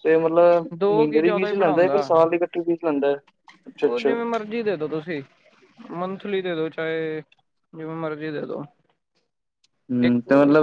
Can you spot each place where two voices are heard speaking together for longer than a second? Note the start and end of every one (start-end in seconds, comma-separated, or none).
0.8-2.0